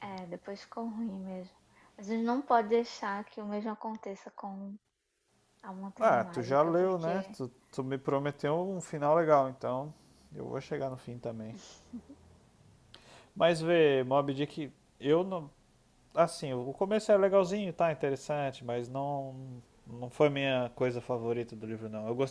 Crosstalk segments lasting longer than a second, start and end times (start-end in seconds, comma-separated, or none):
6.0-7.4